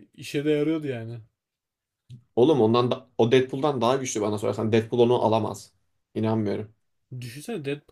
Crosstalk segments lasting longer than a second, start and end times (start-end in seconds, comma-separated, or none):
none